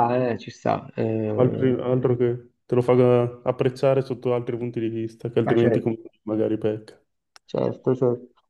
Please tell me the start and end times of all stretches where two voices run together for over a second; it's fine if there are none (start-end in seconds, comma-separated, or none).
none